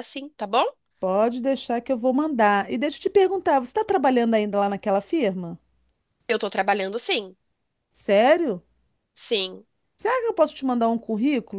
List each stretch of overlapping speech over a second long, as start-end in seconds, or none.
none